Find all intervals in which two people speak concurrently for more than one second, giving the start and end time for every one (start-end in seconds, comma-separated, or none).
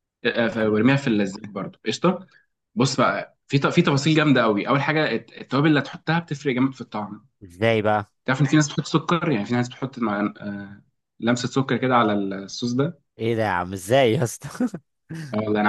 none